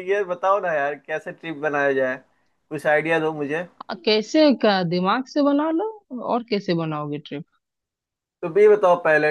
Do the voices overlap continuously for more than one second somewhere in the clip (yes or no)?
no